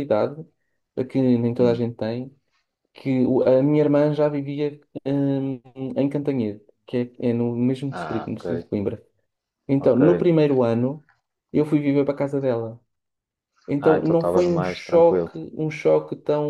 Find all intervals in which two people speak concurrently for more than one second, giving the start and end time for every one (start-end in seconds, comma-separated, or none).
13.8-15.3